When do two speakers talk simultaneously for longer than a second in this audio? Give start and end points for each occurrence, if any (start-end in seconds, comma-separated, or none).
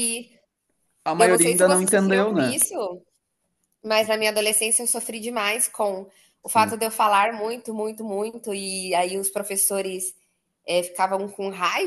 1.2-2.6